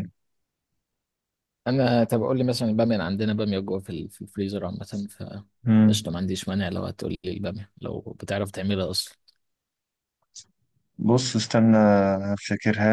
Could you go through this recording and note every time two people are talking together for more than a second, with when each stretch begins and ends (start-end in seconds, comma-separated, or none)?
none